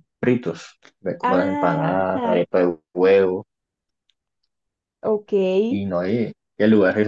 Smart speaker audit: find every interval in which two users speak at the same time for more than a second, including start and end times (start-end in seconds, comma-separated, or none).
1.2-2.4